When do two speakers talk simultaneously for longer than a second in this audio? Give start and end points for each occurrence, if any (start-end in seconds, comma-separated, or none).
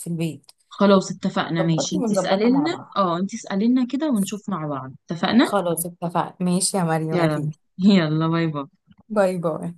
1.6-3.0